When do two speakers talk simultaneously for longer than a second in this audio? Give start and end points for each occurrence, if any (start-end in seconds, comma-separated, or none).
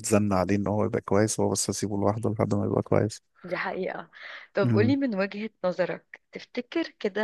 none